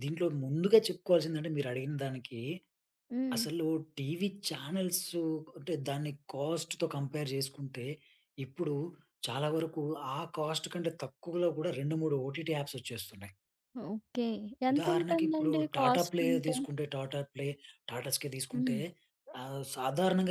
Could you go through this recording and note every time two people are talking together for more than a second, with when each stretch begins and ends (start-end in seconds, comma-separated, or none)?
14.7-16.6